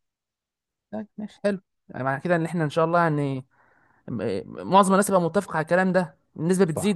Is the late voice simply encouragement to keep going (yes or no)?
no